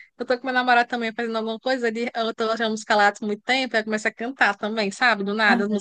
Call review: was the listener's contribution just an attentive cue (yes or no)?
yes